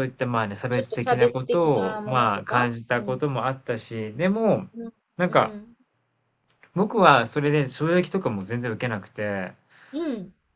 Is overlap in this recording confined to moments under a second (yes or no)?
no